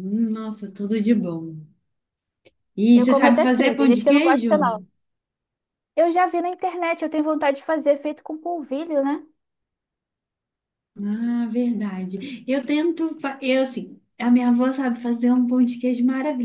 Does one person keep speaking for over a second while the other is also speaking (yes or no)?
yes